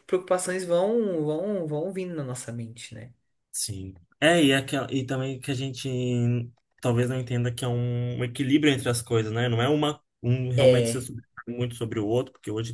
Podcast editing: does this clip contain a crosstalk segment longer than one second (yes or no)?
no